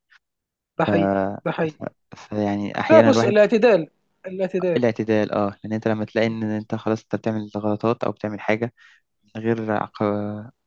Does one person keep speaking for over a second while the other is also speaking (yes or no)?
no